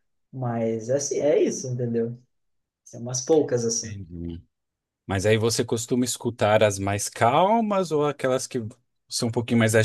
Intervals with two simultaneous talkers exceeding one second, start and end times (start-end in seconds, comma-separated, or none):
none